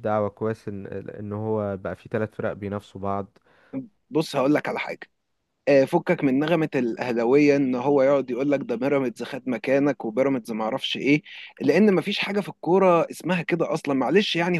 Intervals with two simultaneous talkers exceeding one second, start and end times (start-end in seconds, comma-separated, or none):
none